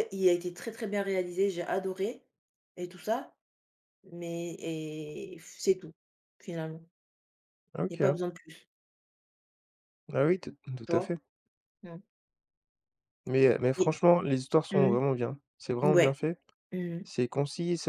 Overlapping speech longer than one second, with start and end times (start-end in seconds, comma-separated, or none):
none